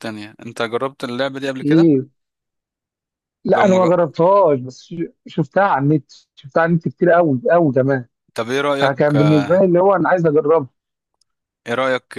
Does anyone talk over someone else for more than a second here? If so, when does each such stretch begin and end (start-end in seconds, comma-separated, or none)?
none